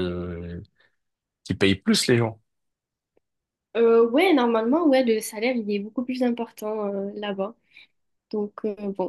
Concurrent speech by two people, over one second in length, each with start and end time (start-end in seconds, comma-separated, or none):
none